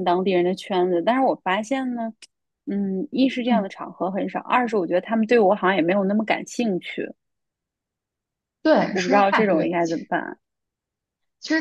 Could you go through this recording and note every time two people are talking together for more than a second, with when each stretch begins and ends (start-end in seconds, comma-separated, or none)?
8.9-10.1